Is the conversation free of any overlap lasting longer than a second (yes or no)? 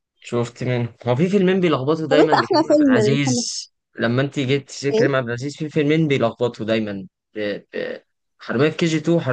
no